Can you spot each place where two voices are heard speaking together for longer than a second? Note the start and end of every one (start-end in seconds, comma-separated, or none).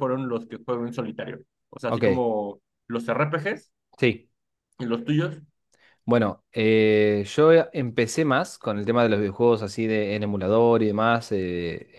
none